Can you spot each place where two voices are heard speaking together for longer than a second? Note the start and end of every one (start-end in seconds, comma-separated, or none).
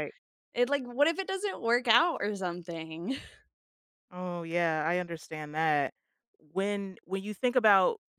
none